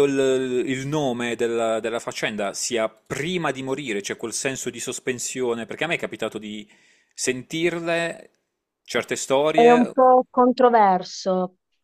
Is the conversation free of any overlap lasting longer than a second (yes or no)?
yes